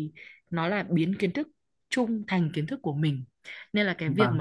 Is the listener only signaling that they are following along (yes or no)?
yes